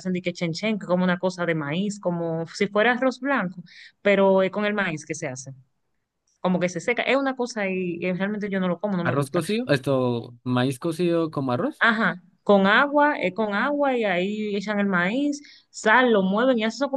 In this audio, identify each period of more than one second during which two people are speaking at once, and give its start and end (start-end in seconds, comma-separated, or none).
none